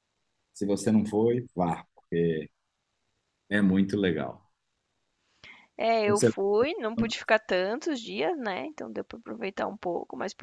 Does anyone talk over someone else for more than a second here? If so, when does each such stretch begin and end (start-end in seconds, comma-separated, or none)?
none